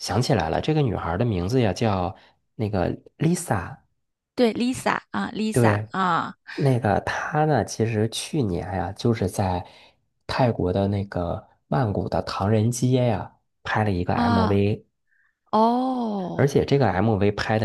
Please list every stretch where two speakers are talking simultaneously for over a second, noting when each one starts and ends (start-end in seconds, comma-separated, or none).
none